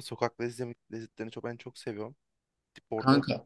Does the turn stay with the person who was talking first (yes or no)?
yes